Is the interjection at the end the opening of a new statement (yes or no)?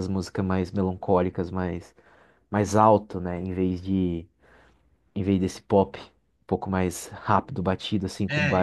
yes